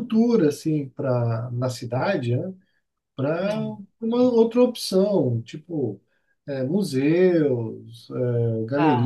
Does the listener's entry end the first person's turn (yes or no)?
no